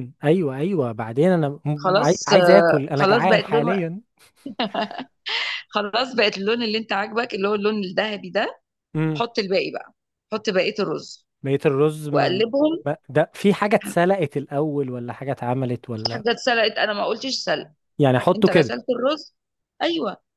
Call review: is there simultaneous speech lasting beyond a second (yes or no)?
yes